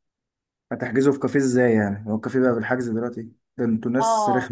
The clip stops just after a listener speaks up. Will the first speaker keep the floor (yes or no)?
no